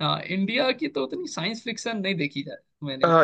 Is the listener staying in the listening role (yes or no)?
no